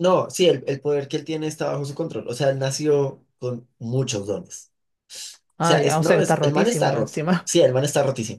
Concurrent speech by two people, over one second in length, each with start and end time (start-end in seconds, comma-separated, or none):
5.6-7.5